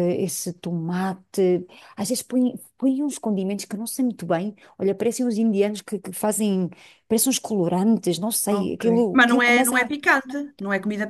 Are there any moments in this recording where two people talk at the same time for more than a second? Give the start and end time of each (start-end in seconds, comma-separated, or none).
8.5-9.9